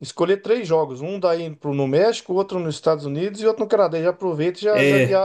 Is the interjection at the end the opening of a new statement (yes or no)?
yes